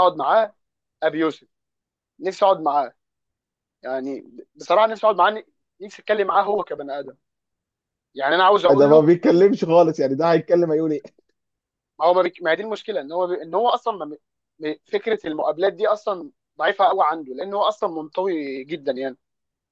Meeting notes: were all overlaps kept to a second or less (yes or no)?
yes